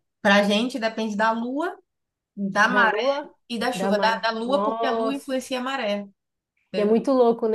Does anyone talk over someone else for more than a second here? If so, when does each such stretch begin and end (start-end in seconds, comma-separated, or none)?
3.7-5.3